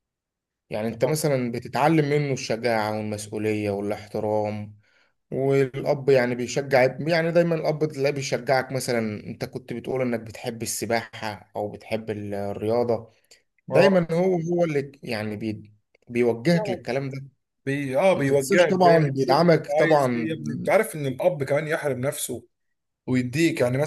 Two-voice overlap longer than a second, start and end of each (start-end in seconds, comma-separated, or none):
18.1-20.4